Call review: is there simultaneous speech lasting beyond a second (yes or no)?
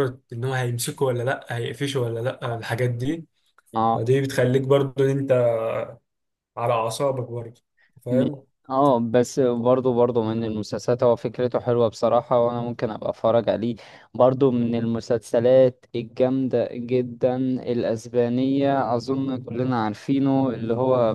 no